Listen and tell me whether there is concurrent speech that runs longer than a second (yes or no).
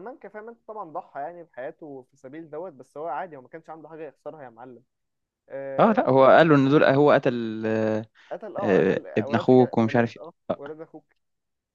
yes